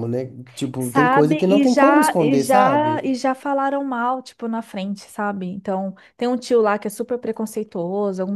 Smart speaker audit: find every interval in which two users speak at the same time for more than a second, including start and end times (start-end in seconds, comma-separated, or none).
0.8-3.1